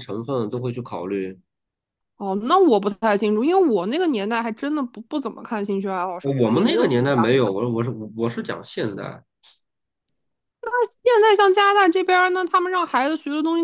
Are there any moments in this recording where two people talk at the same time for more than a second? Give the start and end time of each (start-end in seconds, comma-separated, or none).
6.2-7.5